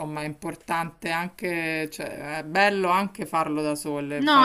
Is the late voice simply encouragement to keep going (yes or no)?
no